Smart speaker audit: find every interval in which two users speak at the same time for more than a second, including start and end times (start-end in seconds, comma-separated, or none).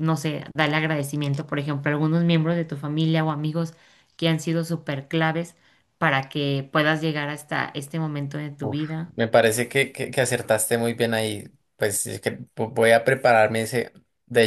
none